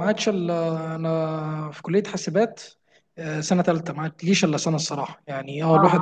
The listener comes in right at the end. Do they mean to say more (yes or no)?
no